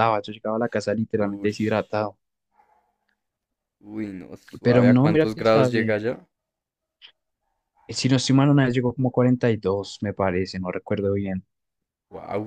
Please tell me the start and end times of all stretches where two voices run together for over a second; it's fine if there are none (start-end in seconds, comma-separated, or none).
4.6-6.0